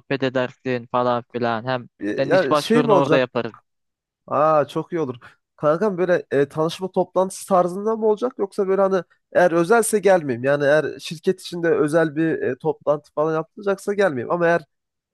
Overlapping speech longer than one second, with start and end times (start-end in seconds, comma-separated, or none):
2.0-3.3